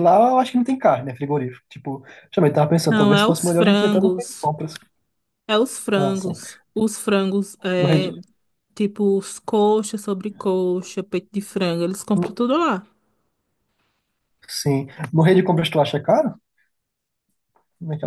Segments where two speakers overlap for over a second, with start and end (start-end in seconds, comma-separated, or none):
2.9-4.5